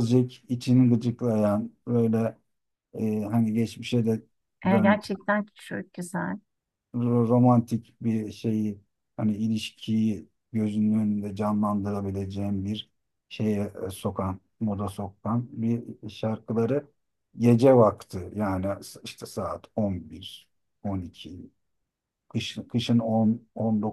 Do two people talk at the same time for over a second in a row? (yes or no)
no